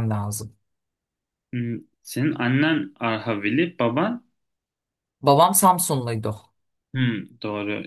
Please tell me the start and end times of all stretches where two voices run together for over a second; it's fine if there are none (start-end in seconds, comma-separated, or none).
none